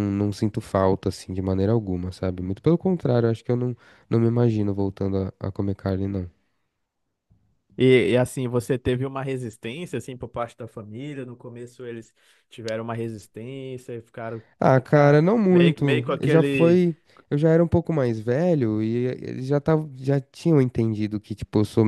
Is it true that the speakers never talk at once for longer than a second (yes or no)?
no